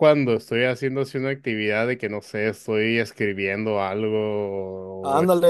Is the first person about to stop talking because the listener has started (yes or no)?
yes